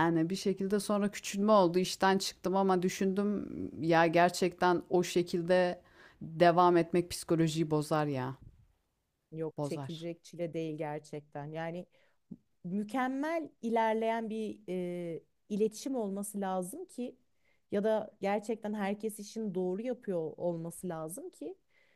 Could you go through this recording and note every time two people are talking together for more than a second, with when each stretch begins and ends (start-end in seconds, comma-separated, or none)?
none